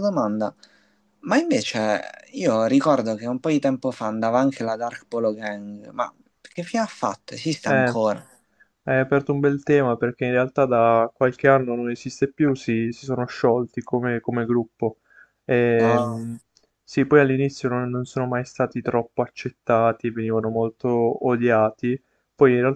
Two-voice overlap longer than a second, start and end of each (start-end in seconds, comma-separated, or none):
none